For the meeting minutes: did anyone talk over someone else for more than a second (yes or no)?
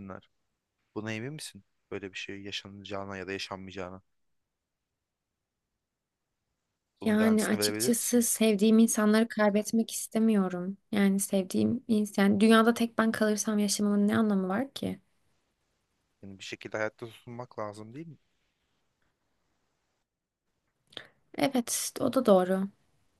yes